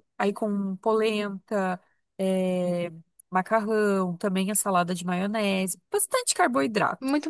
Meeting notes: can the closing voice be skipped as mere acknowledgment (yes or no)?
no